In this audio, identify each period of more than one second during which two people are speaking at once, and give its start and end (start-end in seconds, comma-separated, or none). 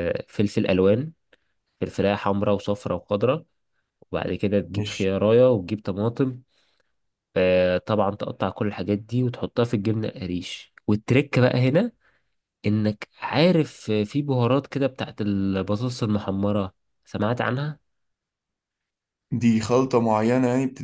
none